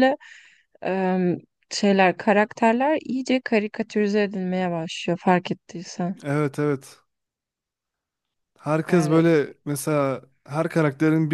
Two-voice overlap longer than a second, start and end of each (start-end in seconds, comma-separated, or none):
none